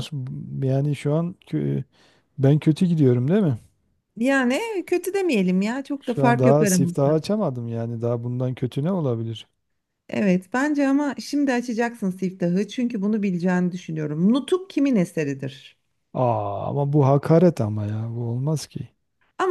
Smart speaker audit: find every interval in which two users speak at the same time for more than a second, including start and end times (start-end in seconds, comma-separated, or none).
6.0-7.2